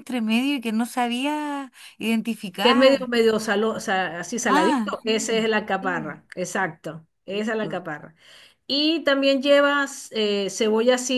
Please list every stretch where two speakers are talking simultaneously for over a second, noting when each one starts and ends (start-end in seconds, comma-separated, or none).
4.5-6.2